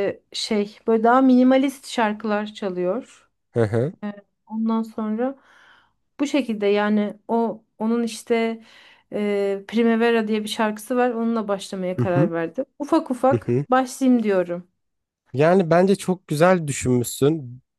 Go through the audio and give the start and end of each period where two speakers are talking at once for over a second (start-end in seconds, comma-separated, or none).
none